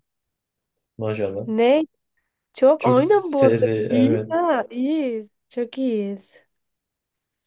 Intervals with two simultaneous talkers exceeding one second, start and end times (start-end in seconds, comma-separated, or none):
2.8-4.4